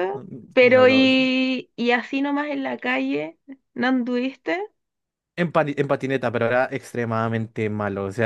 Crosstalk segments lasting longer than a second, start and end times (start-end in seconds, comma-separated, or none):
none